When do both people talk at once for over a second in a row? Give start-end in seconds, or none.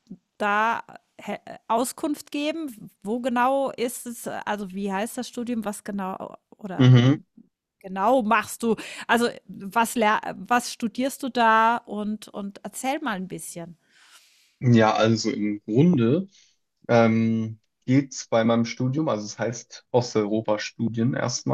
none